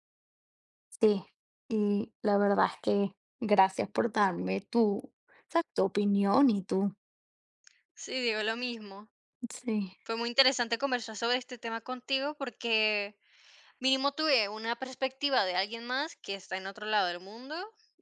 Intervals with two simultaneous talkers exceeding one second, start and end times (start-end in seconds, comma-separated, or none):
none